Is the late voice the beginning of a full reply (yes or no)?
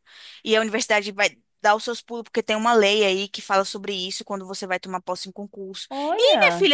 no